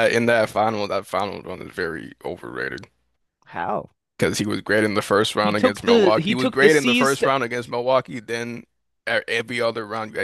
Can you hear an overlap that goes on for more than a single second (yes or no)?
yes